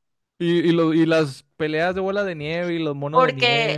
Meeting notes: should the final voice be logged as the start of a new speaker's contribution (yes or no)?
yes